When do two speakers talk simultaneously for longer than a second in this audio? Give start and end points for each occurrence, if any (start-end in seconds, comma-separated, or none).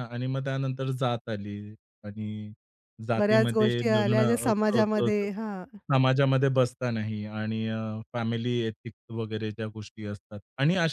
3.2-5.3